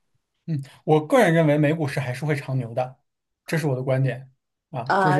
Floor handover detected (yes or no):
yes